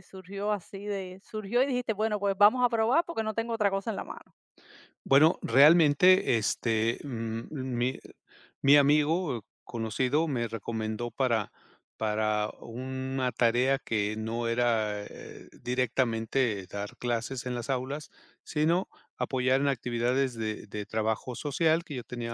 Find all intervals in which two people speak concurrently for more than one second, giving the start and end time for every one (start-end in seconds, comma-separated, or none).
none